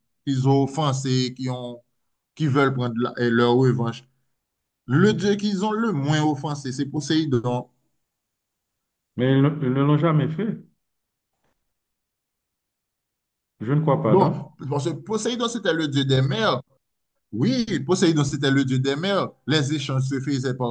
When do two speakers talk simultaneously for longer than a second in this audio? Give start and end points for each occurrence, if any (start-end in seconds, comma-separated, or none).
none